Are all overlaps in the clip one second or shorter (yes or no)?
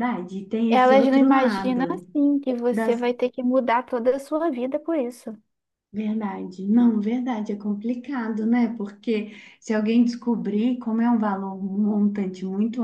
no